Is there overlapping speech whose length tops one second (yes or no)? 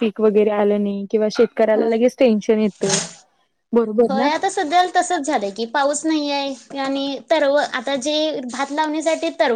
no